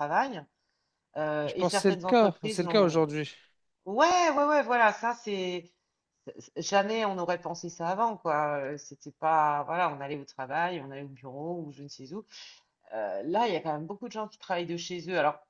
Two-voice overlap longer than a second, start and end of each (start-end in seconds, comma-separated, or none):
1.4-3.0